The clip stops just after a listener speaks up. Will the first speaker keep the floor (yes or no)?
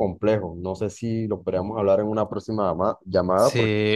no